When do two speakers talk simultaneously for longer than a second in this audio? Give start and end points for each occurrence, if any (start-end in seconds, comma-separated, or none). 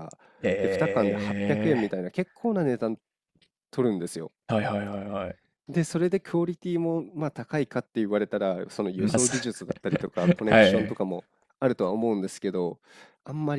0.6-1.9